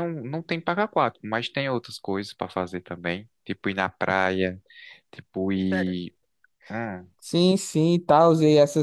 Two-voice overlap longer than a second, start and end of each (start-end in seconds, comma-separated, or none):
none